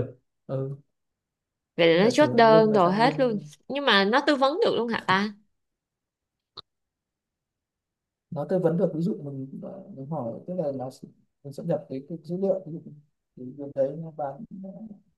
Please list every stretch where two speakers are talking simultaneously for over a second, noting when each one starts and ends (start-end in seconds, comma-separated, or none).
2.0-3.3